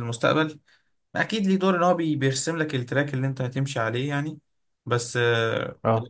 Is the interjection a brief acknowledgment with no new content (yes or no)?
yes